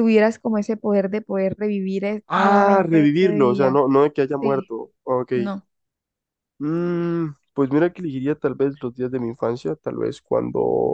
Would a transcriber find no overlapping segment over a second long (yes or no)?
no